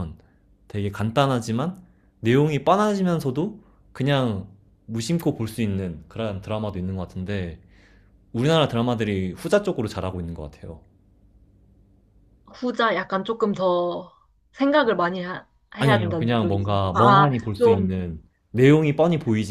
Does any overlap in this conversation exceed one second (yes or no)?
yes